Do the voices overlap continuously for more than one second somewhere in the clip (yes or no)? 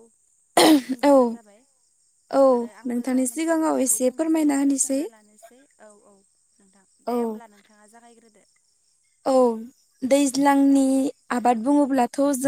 yes